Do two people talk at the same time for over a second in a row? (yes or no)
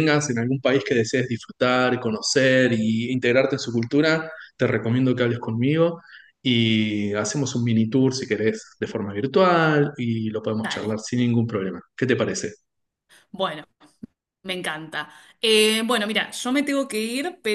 no